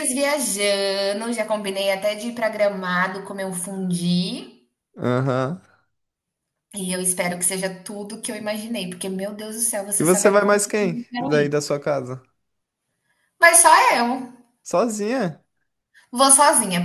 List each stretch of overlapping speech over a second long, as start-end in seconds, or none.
10.0-11.5